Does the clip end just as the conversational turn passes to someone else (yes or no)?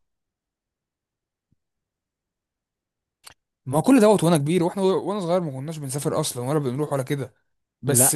no